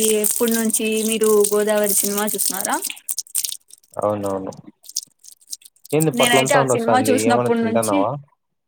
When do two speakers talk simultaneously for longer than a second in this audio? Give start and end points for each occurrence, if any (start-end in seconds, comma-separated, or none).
6.2-8.0